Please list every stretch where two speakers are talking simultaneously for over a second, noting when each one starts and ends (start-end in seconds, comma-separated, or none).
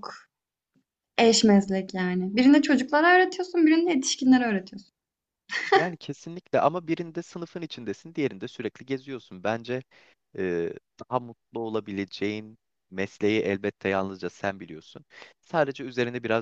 none